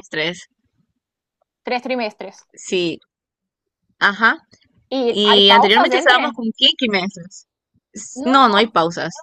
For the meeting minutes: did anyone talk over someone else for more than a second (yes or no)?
yes